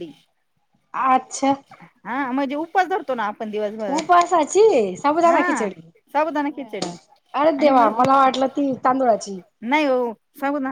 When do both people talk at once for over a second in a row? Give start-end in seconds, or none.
none